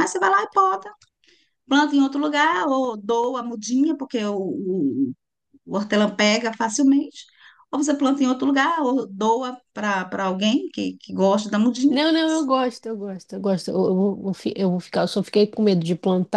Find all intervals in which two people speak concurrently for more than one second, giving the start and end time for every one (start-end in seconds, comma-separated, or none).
none